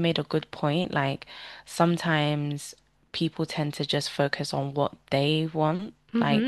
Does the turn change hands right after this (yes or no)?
yes